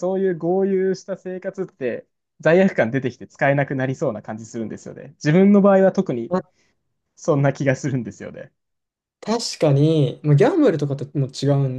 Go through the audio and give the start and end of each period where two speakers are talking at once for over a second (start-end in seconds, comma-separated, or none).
none